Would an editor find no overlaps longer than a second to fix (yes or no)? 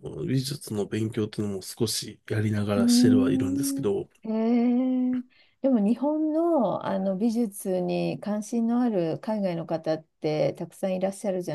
no